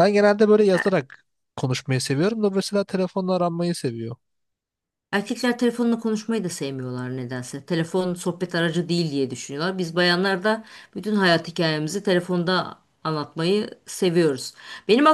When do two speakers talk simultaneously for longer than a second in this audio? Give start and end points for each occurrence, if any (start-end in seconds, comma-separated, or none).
none